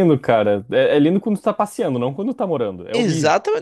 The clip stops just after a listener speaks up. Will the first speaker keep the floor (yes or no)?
no